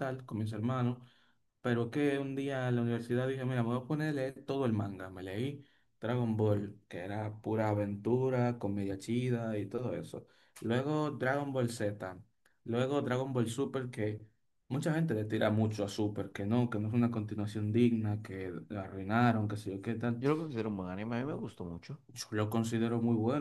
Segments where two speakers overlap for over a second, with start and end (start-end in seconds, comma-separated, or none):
none